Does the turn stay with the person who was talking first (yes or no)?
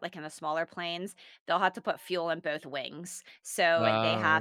yes